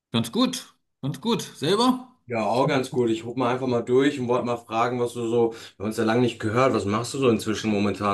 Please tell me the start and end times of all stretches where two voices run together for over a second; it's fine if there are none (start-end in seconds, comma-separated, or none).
none